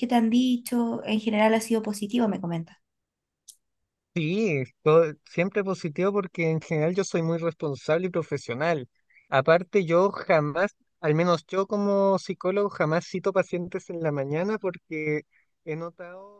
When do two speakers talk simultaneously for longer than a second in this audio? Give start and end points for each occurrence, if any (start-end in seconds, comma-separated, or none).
none